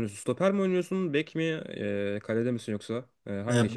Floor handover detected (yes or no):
yes